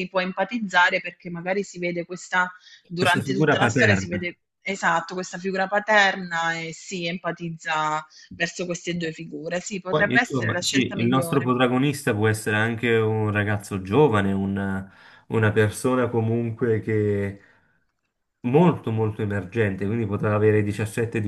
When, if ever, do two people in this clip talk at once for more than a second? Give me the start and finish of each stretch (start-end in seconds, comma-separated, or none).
3.0-4.4, 9.9-11.5